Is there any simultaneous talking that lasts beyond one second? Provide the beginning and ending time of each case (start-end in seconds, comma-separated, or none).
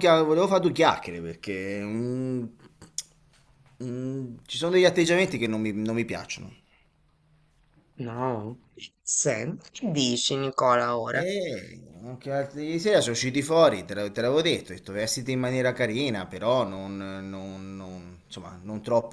none